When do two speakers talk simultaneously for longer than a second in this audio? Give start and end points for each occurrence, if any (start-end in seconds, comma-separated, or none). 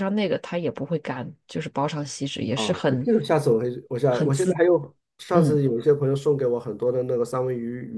none